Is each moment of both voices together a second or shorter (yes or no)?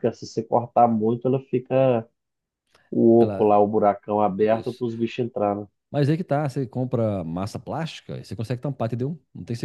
yes